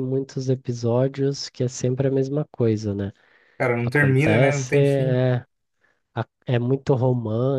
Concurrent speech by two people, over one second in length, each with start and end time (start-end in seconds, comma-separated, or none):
3.8-5.2